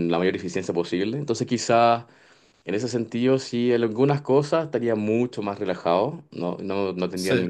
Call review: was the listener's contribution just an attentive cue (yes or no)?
yes